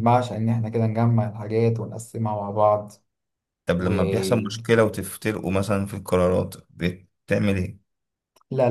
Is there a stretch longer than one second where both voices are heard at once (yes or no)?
no